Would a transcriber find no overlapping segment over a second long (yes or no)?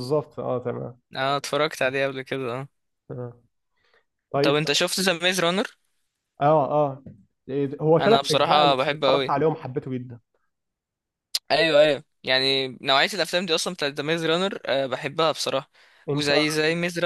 no